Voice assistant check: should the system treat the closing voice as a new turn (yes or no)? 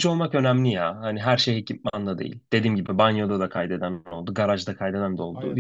no